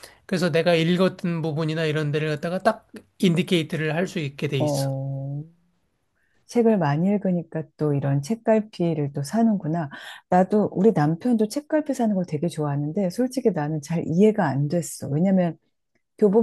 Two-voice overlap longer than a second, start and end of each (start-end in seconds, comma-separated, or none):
none